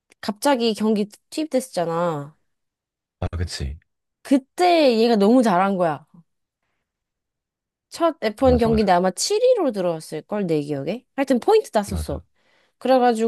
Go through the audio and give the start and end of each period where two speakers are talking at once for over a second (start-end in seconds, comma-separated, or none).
none